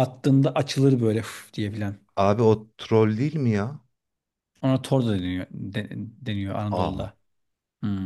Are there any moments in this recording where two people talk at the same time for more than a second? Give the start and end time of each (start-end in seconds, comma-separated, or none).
none